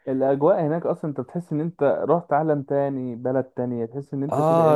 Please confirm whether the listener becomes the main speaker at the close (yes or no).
yes